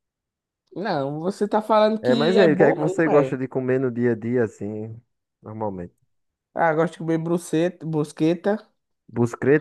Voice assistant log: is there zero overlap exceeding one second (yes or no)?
no